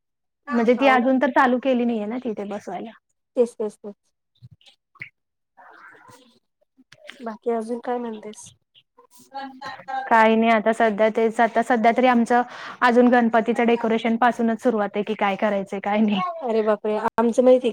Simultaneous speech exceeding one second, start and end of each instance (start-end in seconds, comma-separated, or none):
none